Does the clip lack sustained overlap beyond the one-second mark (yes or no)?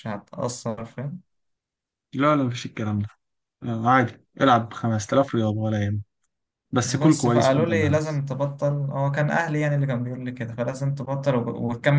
no